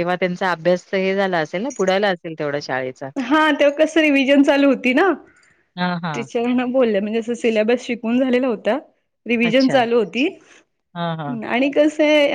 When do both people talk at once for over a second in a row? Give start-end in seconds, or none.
none